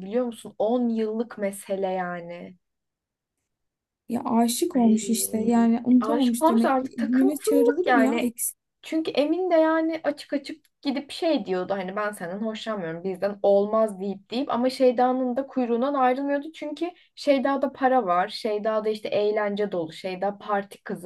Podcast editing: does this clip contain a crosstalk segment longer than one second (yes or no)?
yes